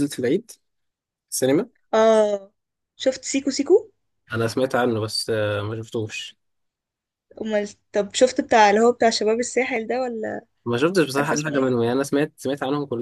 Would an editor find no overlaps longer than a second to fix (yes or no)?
yes